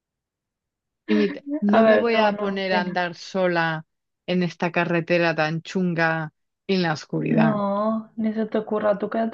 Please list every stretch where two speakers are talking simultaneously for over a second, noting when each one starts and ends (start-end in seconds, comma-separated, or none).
1.7-3.0